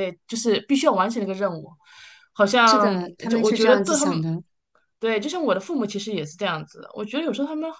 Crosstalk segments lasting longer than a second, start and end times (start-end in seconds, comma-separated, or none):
2.7-4.2